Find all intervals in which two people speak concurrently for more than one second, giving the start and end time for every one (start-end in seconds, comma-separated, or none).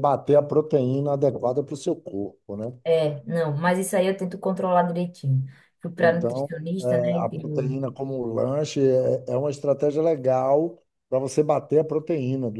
6.0-7.8